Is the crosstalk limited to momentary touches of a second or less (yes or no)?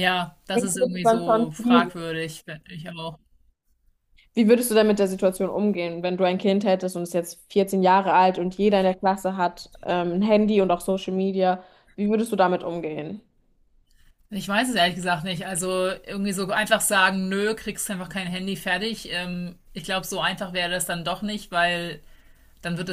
no